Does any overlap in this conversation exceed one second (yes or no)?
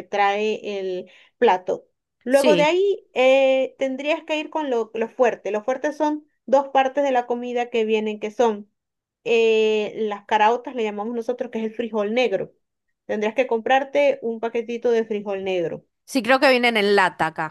no